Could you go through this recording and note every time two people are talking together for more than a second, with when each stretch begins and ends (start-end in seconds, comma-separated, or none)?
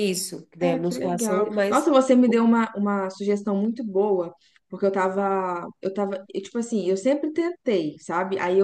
0.6-1.9